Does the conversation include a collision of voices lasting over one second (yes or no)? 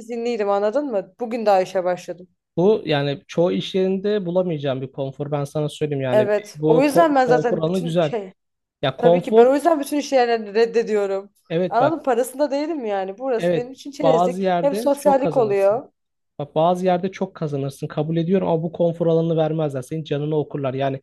yes